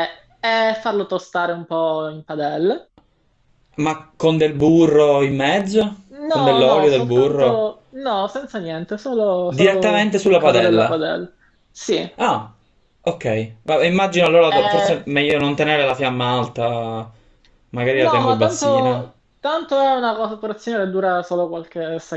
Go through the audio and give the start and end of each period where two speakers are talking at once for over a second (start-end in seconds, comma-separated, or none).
6.3-7.7, 9.5-11.1, 17.9-19.1